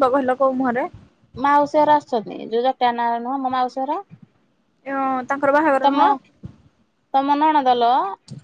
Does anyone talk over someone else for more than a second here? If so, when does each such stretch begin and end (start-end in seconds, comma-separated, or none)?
none